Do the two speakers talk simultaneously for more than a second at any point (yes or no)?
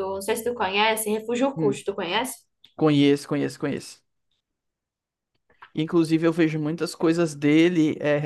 no